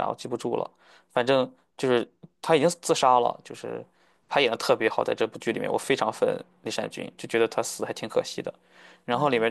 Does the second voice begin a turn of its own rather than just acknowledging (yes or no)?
no